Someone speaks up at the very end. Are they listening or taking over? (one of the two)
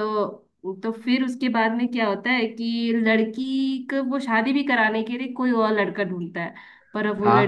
listening